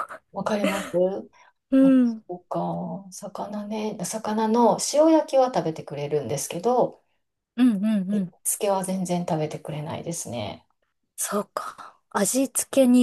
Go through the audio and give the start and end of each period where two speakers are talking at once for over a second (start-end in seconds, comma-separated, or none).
none